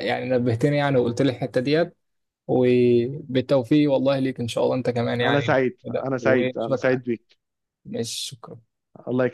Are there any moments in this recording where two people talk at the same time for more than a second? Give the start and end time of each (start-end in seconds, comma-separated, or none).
5.2-7.0